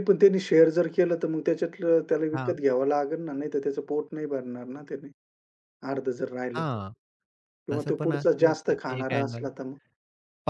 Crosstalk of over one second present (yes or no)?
yes